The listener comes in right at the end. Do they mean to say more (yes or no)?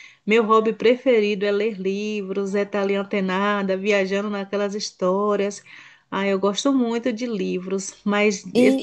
no